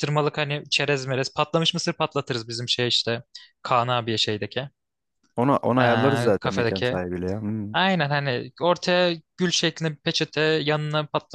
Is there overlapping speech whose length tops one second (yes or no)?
yes